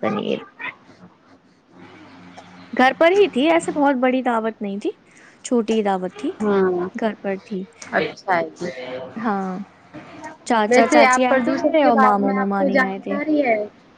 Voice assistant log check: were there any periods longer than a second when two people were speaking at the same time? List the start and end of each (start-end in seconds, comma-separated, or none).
10.7-13.2